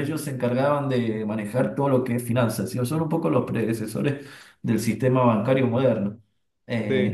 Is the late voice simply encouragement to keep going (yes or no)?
yes